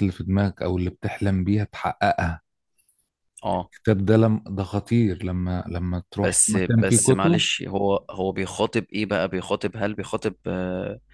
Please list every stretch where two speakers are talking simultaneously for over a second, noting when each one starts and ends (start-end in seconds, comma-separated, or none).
6.2-7.5